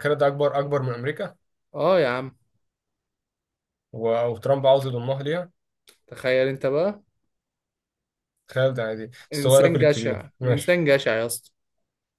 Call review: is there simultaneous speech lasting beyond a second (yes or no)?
yes